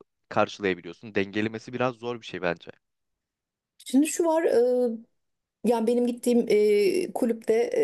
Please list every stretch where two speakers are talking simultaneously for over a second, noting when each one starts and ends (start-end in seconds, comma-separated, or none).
none